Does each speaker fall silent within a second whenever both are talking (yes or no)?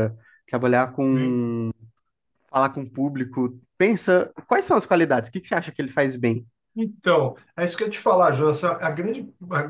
yes